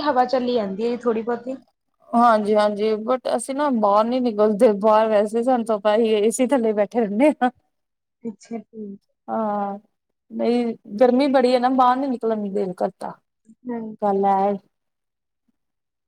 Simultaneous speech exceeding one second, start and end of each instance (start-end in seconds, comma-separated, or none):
none